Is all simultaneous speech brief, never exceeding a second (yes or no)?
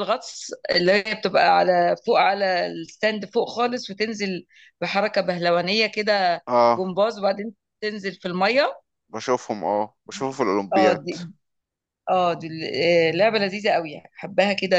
yes